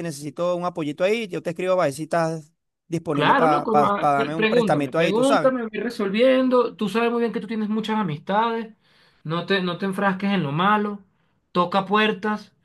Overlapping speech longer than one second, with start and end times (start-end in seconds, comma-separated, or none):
3.1-5.5